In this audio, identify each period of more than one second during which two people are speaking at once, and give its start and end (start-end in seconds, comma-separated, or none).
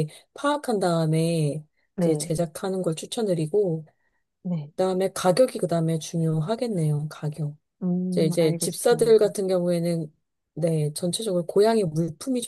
8.1-9.3